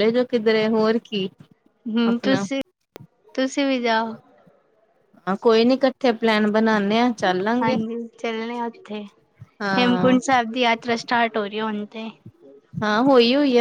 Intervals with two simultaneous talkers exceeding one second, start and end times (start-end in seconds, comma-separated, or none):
none